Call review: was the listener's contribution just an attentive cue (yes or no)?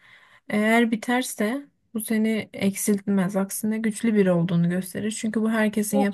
no